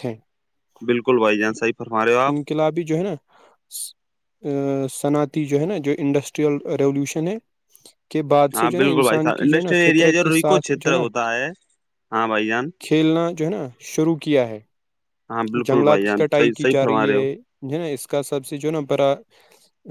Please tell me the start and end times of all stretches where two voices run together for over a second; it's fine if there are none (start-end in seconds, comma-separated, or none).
8.6-11.0, 15.6-17.2